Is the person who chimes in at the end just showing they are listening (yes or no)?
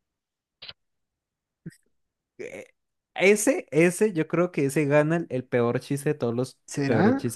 yes